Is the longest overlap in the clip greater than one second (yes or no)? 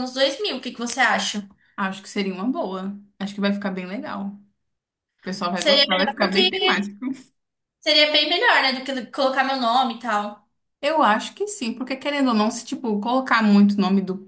yes